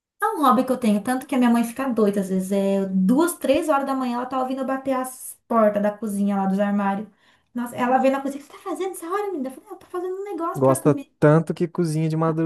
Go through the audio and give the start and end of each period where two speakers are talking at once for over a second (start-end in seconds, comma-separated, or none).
none